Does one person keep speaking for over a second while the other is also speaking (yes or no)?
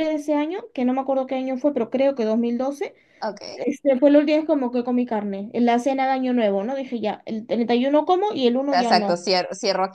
no